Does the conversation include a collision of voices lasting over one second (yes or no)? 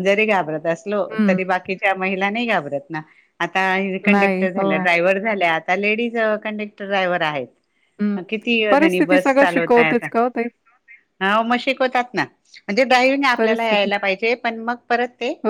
yes